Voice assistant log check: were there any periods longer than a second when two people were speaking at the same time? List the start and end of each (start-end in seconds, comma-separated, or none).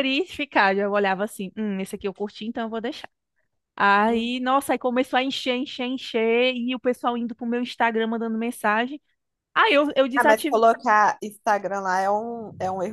none